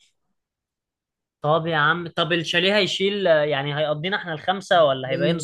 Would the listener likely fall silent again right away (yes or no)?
no